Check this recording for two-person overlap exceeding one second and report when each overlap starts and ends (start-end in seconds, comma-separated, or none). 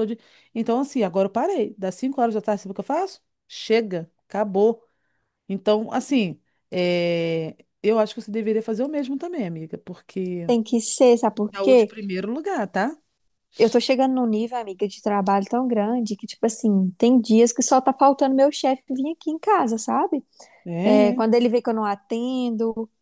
none